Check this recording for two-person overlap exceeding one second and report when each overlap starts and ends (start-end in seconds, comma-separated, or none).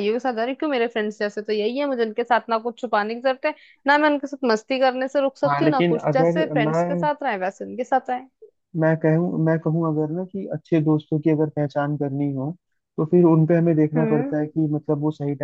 5.5-7.1